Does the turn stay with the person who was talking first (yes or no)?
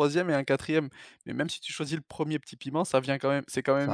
yes